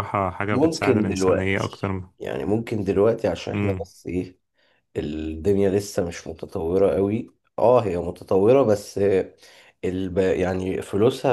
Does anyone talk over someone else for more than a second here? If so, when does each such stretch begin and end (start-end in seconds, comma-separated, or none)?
0.5-2.0